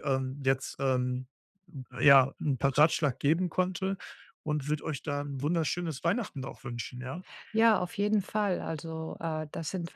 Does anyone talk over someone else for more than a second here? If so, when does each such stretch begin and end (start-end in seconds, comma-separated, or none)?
none